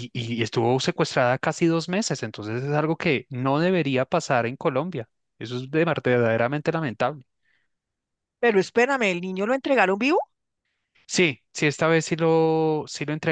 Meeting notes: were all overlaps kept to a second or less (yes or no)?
yes